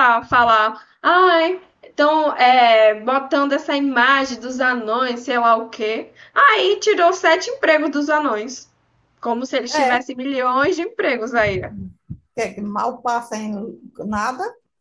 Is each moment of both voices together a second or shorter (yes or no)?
yes